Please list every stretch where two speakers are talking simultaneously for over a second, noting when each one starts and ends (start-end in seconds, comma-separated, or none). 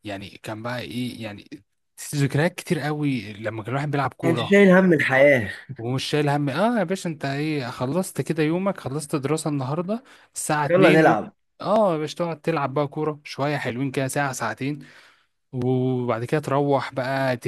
none